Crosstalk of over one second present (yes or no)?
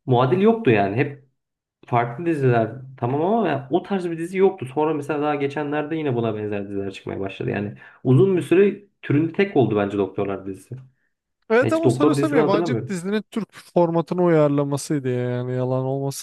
yes